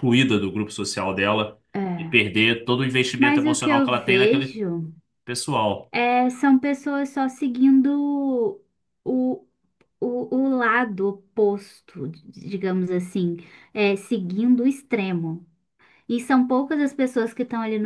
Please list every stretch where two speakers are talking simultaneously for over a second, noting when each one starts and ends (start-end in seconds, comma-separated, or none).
3.2-4.6